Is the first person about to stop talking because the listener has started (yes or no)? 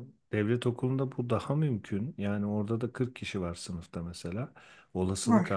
no